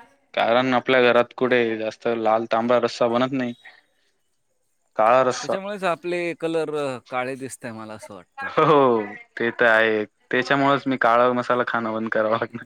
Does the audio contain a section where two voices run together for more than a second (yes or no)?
no